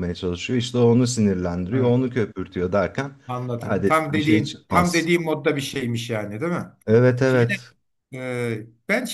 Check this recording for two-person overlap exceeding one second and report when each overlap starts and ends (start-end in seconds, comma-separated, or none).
3.6-5.1